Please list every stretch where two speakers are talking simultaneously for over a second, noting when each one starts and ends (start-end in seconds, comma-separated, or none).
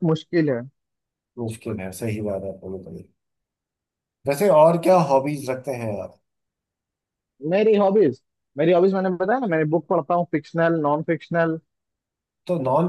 none